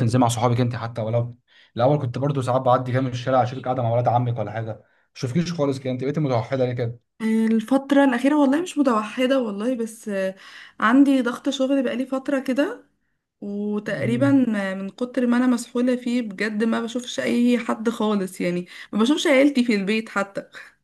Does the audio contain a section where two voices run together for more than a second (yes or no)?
no